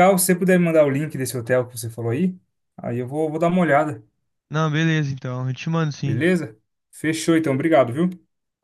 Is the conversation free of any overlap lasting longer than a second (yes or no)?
yes